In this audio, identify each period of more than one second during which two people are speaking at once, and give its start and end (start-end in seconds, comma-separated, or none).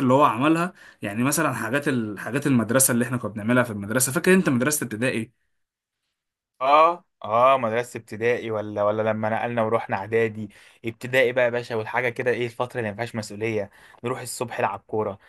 none